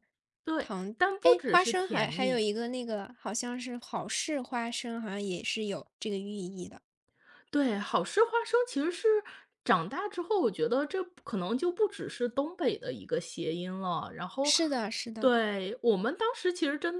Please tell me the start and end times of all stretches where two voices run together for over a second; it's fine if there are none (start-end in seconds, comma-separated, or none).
0.6-2.5